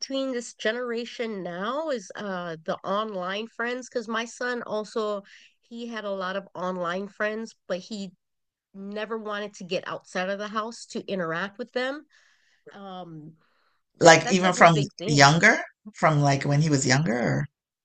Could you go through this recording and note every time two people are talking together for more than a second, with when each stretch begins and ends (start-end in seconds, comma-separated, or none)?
14.0-15.3